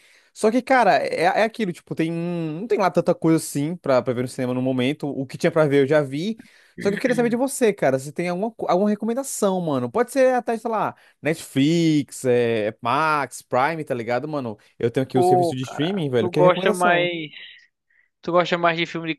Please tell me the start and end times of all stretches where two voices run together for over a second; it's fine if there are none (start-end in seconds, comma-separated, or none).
15.1-17.1